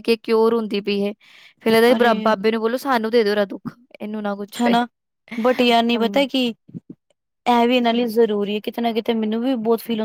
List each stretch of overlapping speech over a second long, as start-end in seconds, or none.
none